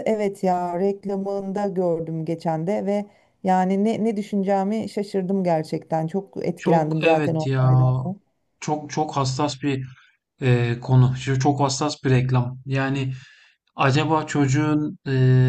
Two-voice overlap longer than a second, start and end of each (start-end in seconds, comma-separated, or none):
6.5-7.9